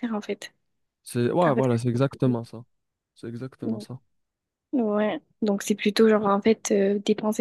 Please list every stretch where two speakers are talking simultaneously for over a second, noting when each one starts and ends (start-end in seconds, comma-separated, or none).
none